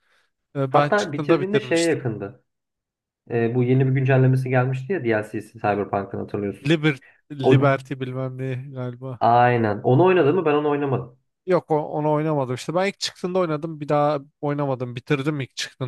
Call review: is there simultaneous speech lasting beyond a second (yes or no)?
yes